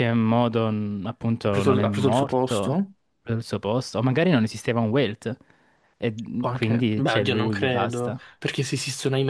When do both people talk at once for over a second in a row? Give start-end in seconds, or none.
1.4-2.8, 6.4-8.2